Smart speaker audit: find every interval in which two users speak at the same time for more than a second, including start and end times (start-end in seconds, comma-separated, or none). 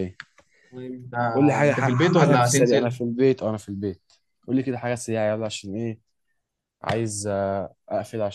1.3-3.0